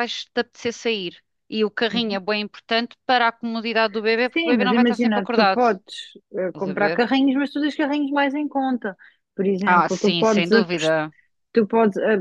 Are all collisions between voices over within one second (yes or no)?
no